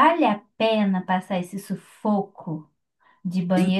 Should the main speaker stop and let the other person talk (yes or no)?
no